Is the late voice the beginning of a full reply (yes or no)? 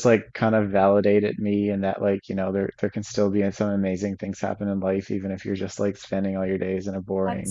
yes